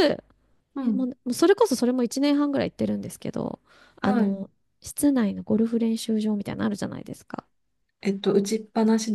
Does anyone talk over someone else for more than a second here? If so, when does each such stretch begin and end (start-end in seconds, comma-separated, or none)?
none